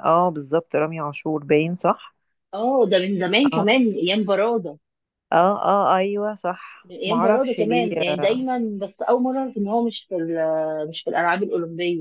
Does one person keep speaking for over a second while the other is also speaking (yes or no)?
yes